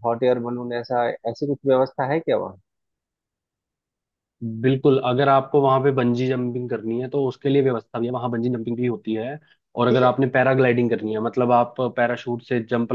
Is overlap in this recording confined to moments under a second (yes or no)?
yes